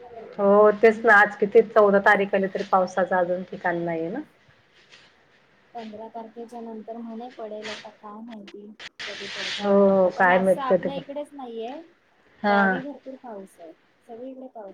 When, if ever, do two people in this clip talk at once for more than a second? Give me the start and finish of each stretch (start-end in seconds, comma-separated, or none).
9.6-11.0